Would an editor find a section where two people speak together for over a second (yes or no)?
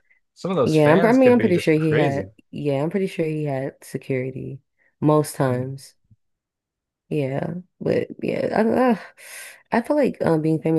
yes